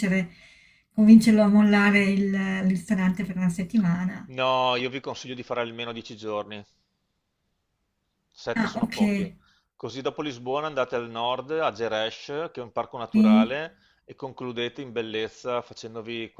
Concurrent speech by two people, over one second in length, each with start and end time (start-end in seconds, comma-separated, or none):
none